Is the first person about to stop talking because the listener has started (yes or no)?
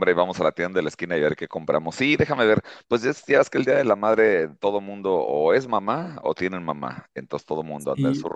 no